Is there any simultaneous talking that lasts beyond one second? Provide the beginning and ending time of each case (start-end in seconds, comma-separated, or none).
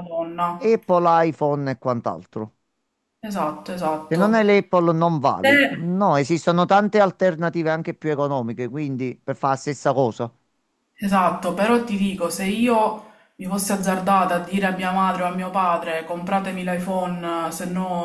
none